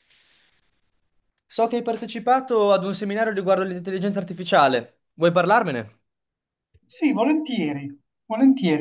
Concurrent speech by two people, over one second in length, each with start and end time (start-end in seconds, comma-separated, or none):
none